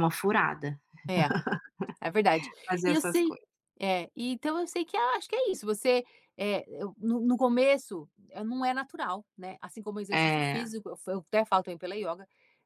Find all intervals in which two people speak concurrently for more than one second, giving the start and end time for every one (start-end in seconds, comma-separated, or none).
none